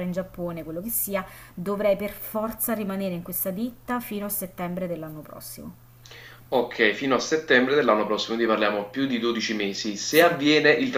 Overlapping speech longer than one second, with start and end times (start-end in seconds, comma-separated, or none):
none